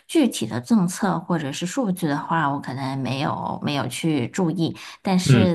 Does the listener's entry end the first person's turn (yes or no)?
no